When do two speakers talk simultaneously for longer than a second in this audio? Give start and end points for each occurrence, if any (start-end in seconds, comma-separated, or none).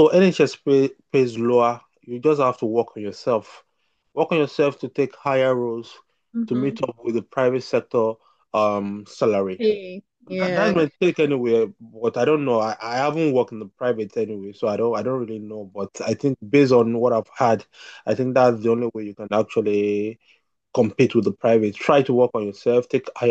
none